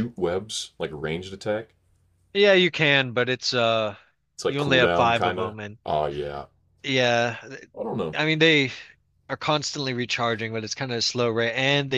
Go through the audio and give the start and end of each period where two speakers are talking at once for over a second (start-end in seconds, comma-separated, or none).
4.5-5.8